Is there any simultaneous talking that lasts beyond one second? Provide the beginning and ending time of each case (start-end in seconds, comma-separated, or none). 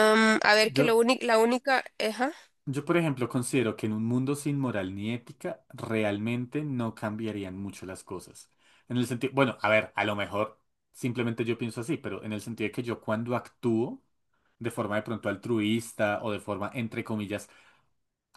none